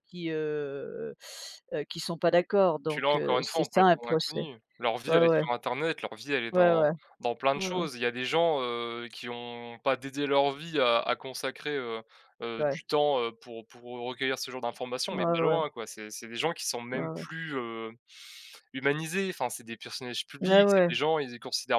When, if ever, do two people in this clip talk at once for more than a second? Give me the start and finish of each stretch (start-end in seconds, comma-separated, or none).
2.9-4.4